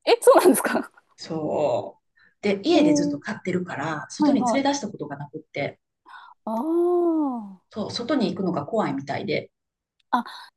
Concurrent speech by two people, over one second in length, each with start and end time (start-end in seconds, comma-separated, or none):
none